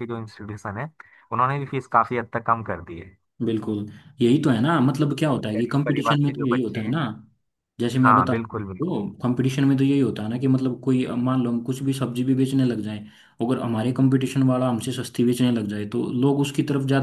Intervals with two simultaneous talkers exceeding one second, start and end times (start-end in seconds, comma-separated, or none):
5.6-7.0